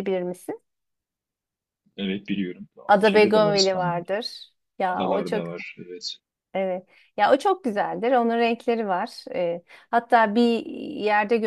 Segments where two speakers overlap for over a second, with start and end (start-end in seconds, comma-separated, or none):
2.9-4.1